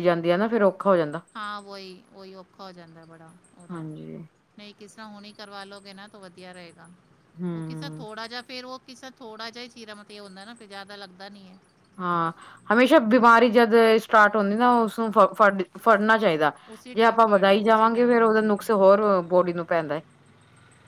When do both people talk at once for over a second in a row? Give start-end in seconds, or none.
16.9-18.5